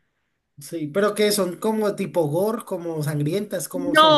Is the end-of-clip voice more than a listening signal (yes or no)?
yes